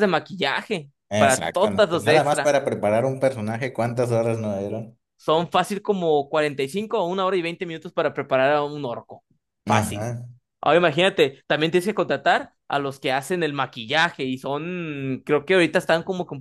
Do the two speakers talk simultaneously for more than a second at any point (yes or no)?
yes